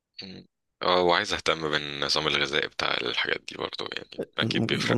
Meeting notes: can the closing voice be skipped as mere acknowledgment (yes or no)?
no